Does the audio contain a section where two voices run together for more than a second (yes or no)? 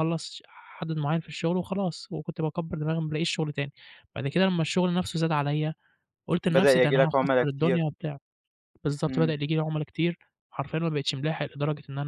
yes